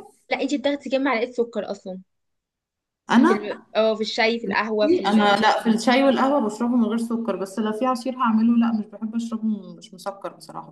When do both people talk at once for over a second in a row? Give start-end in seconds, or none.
none